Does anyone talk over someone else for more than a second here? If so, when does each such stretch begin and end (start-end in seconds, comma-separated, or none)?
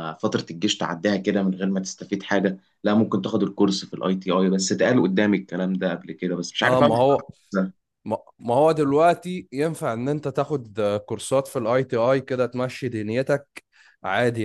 none